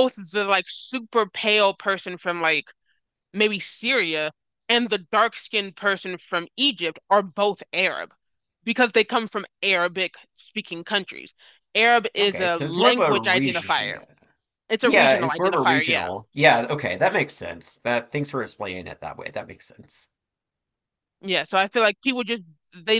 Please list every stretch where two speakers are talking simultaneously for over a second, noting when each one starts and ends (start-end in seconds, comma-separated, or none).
12.2-14.0, 14.8-16.1